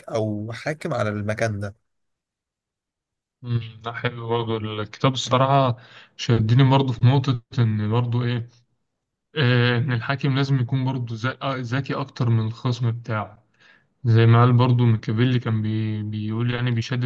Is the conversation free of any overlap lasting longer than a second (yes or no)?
yes